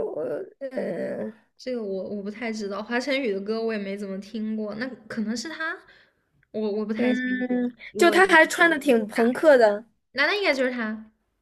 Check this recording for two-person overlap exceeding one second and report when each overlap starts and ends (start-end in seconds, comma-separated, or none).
7.0-9.3